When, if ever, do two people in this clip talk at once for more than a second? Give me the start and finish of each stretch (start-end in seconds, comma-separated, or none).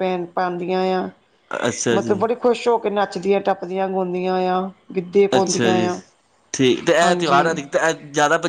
none